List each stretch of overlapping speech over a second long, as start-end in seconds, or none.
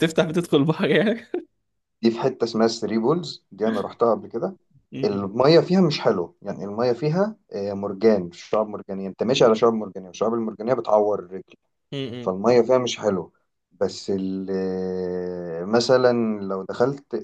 none